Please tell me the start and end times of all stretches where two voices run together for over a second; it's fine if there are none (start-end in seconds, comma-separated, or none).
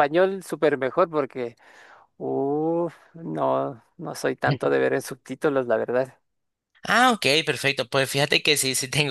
none